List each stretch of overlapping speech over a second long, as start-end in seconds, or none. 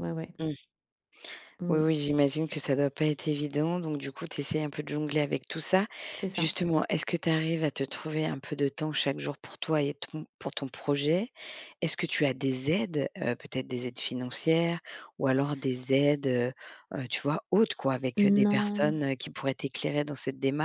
none